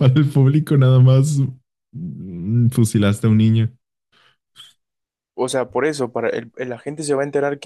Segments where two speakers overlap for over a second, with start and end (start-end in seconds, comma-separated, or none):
none